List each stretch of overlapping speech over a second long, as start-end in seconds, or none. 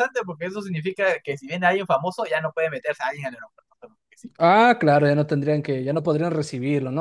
none